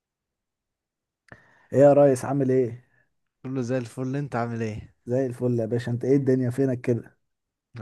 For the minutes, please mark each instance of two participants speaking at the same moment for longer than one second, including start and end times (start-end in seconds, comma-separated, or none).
none